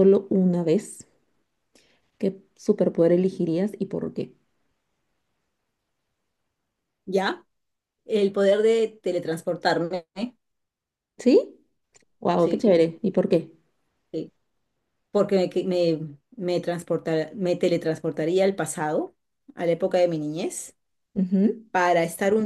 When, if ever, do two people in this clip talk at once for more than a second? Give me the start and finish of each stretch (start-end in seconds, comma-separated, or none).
none